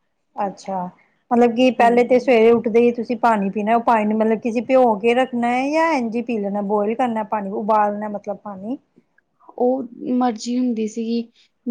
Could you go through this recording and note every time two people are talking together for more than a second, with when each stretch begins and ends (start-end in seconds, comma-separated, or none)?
none